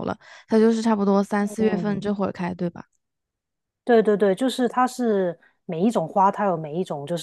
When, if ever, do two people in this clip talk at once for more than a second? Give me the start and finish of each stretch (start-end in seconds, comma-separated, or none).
none